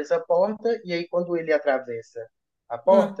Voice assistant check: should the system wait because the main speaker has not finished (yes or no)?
yes